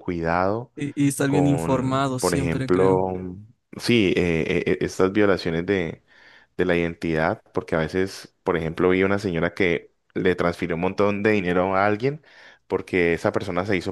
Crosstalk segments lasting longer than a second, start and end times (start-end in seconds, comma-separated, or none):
1.2-3.0